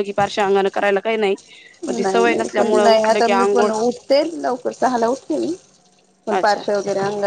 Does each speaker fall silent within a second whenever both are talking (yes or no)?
no